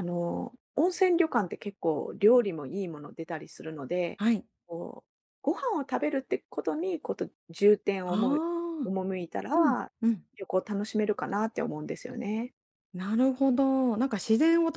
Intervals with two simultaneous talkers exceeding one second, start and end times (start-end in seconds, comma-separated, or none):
none